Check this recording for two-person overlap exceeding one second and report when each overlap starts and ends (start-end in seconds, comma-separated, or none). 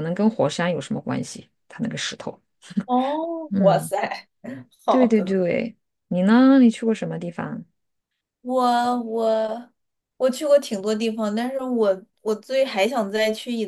none